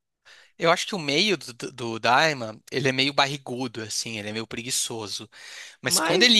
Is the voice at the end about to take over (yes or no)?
no